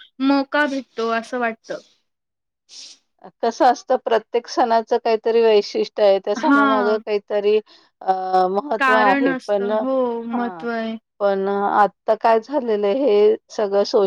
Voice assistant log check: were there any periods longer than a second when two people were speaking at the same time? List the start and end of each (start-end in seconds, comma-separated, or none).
8.8-10.4